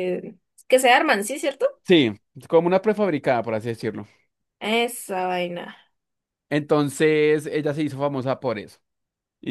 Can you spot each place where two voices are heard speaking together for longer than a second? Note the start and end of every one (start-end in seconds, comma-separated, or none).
none